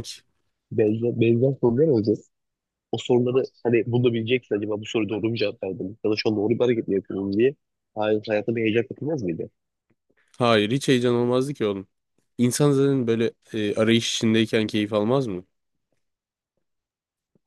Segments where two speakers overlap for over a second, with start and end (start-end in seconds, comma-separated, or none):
none